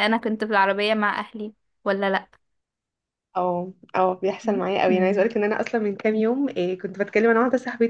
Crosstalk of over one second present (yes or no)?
no